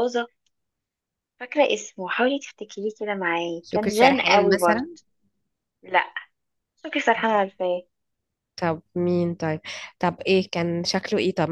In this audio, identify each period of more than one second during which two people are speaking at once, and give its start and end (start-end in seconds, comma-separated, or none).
3.6-4.8